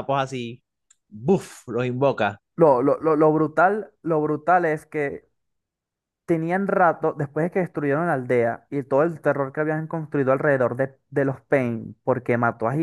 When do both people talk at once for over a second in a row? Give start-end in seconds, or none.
none